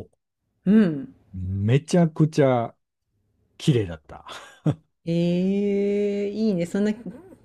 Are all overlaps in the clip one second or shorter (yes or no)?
yes